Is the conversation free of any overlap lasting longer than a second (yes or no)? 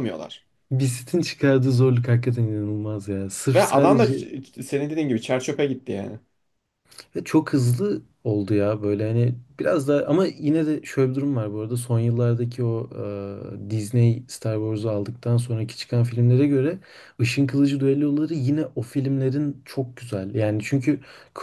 yes